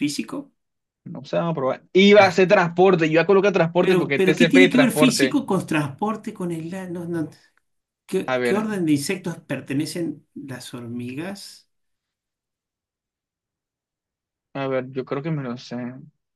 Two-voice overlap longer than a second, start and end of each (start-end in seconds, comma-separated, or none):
3.8-5.4